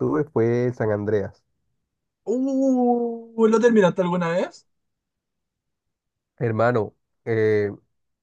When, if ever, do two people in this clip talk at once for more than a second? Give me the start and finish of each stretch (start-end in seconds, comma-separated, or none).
none